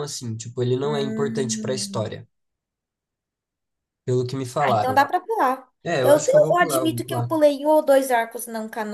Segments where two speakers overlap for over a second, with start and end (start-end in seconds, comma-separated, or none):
0.8-2.2, 5.8-7.3